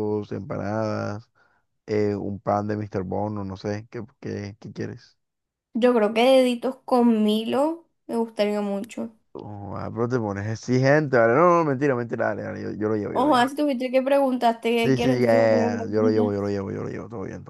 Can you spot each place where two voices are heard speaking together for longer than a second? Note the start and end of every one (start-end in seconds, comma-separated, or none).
14.8-16.5